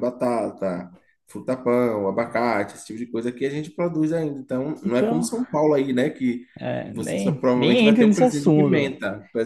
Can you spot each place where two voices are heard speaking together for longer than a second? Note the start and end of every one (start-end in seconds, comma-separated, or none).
6.8-8.9